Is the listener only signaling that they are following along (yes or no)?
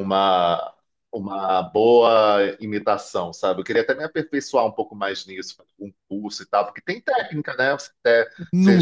yes